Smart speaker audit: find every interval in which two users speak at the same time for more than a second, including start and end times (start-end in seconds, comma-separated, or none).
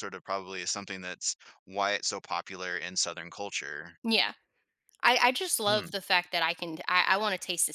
none